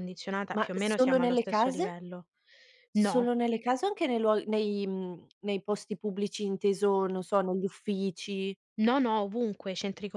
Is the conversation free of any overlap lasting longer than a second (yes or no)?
no